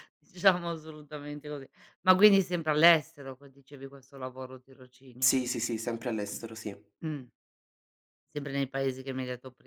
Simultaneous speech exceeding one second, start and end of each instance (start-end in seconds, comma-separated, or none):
none